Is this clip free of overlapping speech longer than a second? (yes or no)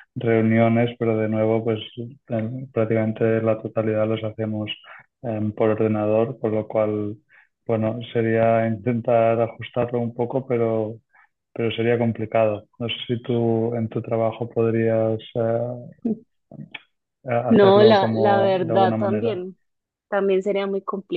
no